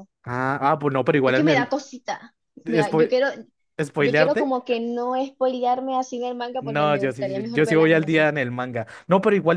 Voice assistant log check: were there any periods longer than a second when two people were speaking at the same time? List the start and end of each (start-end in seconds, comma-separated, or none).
6.6-8.3